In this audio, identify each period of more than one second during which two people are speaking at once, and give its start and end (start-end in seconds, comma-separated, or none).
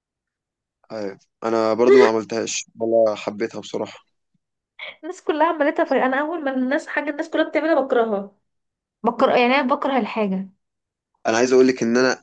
none